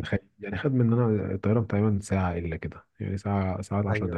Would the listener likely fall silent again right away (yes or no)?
no